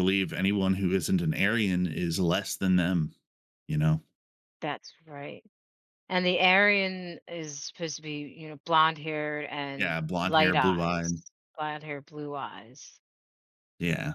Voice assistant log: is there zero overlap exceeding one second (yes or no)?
no